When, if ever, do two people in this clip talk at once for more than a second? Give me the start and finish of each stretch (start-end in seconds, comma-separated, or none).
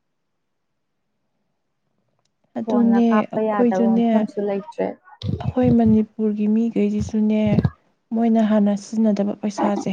2.6-4.0